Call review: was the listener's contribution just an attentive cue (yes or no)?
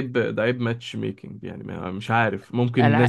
yes